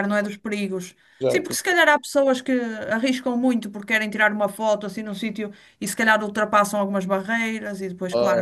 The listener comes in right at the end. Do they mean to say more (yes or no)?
yes